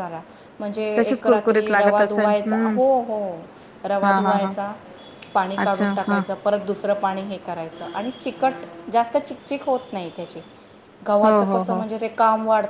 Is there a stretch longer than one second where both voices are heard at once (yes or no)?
yes